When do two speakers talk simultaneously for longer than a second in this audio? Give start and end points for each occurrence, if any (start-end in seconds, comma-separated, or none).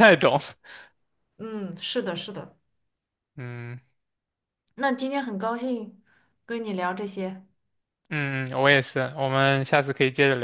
none